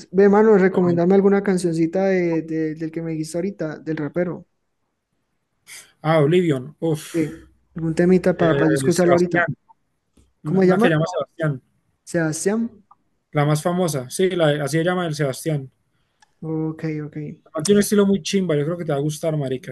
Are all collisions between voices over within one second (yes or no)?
yes